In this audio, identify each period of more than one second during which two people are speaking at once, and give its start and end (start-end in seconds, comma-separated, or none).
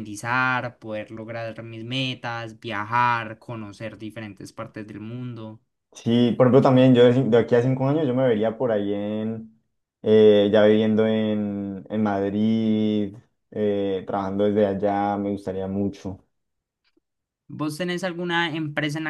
none